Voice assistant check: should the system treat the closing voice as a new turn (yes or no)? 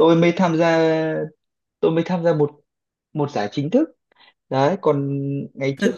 yes